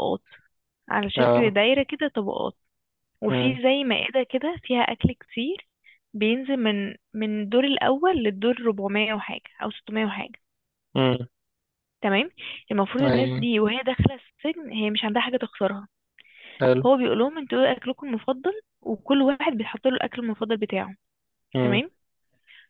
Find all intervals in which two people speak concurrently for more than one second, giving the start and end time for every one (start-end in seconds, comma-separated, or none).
none